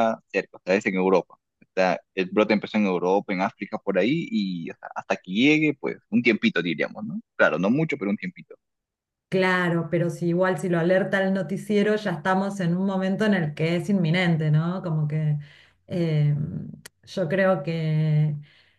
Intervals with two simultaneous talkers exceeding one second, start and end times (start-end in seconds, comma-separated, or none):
none